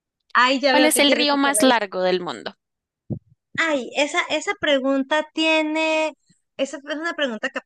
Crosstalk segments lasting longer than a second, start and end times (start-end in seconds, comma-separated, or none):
0.7-1.9